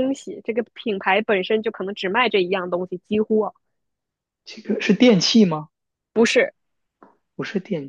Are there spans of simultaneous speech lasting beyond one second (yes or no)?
no